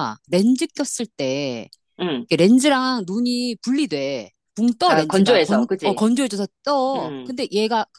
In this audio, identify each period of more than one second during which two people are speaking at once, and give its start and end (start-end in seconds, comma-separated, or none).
4.8-6.0